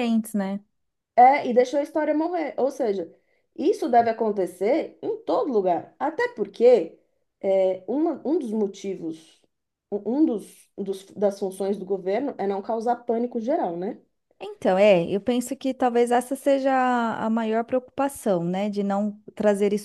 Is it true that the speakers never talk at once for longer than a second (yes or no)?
yes